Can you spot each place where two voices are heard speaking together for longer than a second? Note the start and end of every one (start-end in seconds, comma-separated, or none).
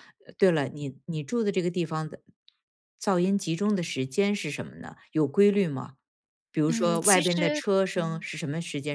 6.7-8.2